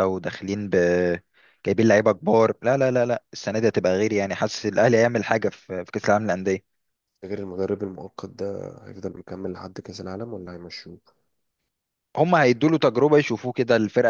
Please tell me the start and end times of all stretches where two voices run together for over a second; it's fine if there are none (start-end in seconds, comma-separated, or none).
none